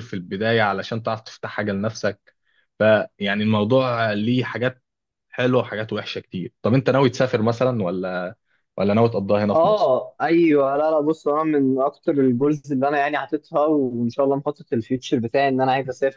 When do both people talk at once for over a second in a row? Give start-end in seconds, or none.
none